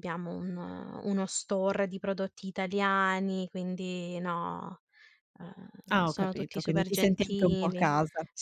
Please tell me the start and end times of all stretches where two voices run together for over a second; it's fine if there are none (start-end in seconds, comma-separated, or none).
5.9-7.9